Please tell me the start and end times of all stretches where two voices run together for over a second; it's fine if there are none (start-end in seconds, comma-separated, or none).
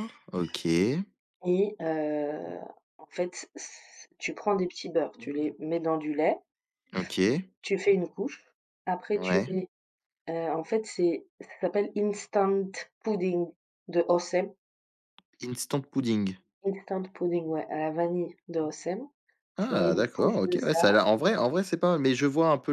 19.6-20.8